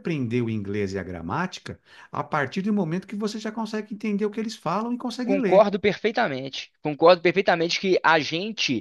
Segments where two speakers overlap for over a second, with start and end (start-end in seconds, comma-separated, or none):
none